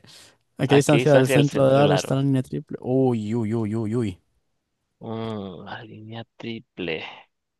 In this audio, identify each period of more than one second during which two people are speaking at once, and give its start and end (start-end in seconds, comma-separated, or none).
0.7-2.2